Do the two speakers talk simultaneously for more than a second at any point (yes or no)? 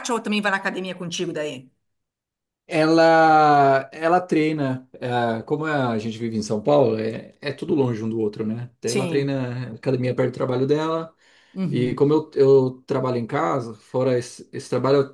no